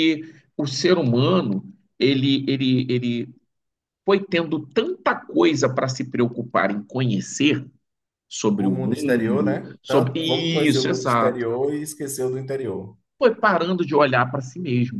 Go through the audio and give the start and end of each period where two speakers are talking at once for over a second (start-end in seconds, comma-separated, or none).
8.6-11.5